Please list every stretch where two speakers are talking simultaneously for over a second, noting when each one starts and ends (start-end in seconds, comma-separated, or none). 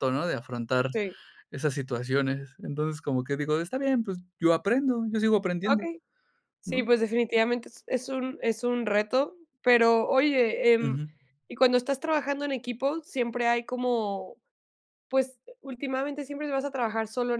none